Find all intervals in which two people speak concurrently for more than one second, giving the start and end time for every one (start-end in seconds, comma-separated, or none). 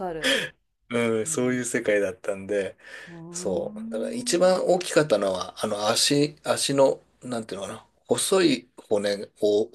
3.3-4.5